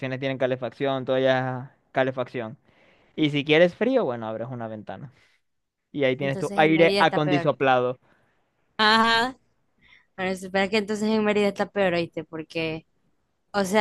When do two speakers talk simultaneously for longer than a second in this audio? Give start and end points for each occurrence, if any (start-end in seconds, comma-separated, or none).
6.2-7.5